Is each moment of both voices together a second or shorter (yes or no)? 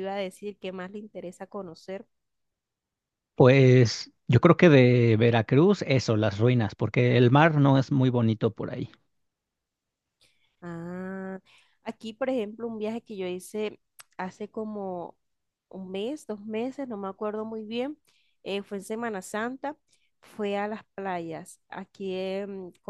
yes